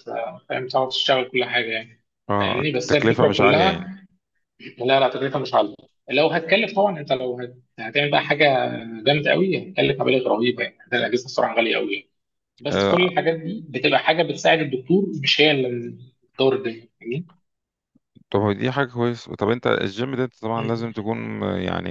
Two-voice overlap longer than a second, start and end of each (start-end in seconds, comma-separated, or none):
2.4-3.9